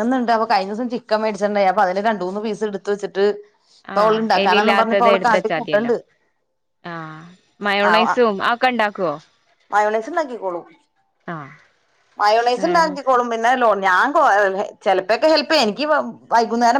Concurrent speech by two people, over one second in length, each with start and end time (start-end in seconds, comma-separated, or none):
4.0-5.9